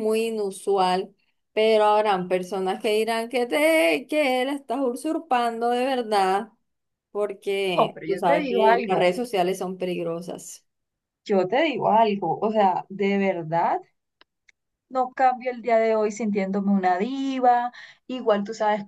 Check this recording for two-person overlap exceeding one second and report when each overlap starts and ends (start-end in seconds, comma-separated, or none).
7.7-9.1